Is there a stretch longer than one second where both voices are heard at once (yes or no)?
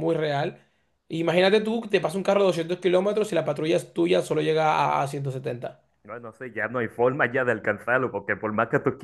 no